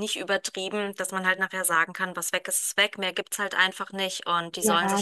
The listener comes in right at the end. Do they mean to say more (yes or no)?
yes